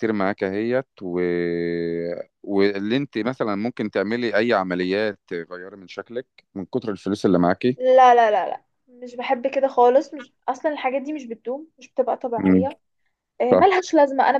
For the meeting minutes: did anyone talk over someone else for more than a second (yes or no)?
no